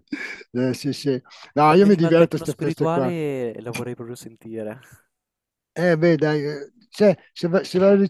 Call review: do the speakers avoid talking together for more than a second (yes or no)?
no